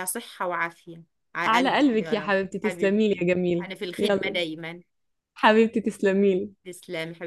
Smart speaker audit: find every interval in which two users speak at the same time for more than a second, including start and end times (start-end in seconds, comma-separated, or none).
1.4-4.4